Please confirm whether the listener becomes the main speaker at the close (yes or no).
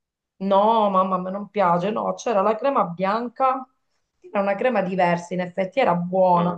no